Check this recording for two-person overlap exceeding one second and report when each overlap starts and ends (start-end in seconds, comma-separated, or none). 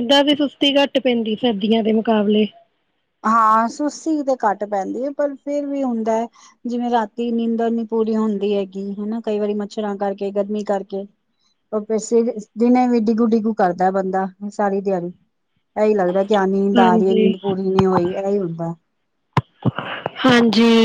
none